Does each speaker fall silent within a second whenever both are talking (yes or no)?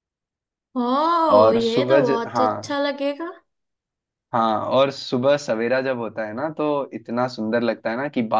no